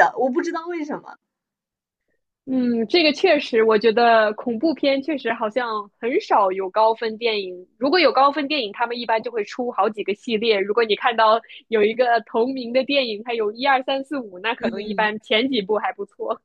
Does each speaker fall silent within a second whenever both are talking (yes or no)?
yes